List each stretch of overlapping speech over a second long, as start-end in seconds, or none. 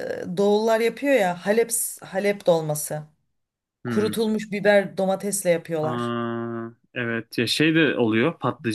none